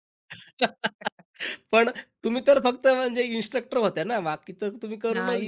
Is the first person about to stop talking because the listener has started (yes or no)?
yes